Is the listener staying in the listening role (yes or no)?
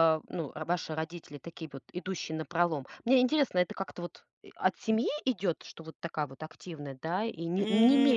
no